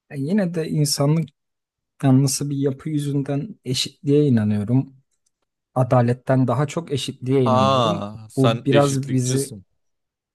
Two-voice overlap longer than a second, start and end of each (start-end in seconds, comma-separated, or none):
7.4-9.6